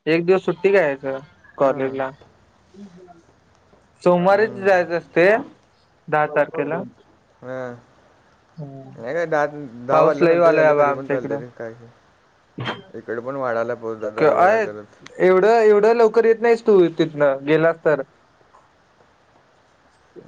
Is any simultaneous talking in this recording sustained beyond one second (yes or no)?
no